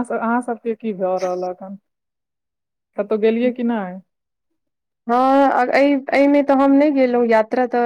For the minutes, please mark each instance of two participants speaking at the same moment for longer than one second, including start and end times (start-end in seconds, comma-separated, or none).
none